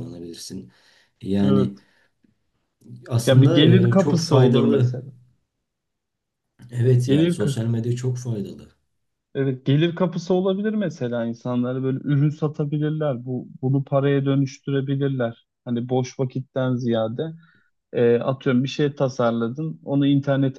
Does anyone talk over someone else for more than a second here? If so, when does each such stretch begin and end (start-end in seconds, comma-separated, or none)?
3.3-4.9